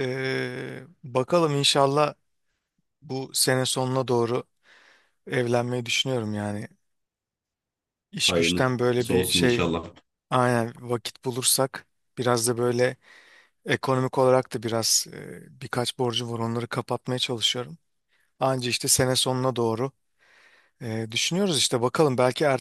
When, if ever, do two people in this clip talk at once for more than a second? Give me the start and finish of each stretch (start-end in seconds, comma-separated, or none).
8.3-9.6